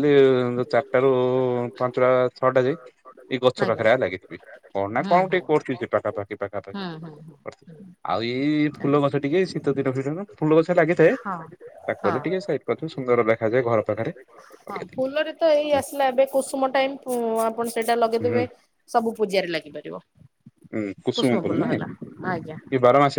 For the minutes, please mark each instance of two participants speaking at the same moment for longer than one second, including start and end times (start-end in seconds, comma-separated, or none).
none